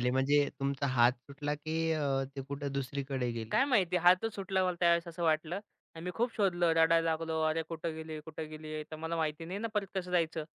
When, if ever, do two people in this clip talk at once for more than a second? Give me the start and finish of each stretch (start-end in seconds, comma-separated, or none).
none